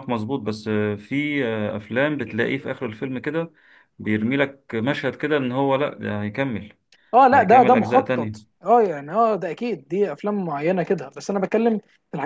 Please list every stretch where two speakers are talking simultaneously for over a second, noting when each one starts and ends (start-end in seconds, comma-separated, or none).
7.3-8.5